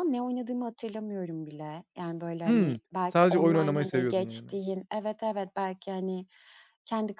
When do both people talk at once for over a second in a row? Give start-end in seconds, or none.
2.5-4.5